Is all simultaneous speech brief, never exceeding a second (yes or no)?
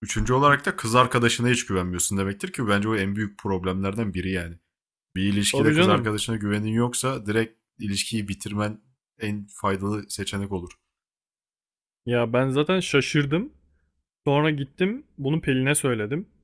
yes